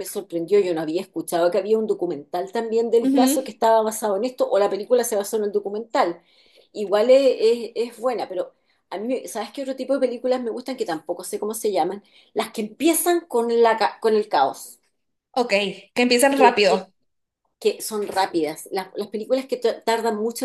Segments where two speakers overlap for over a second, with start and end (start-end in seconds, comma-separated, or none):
none